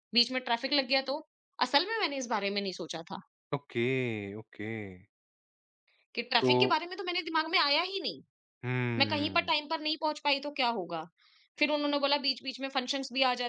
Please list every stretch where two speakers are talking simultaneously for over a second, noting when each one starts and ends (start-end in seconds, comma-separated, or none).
none